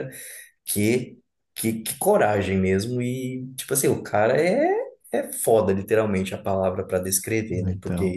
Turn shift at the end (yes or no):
no